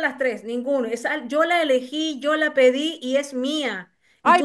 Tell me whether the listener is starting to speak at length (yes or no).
yes